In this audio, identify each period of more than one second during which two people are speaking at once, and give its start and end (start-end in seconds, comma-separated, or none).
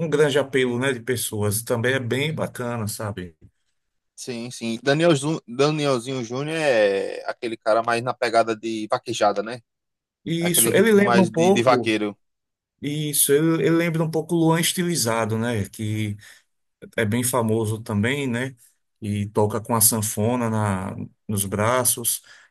10.4-11.9